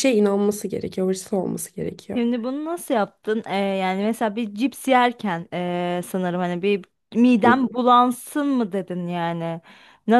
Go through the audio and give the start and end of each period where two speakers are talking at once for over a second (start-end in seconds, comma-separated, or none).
none